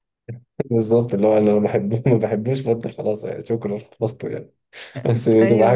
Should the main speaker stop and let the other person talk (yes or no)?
no